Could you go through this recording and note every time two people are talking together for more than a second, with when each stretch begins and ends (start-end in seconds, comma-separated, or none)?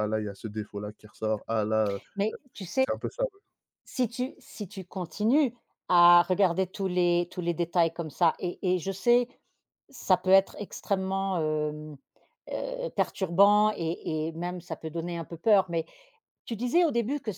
none